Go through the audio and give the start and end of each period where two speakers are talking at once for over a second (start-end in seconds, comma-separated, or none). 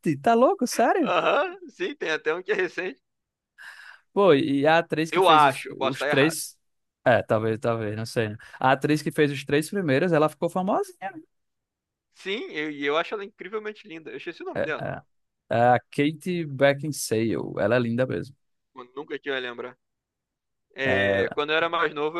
5.1-6.4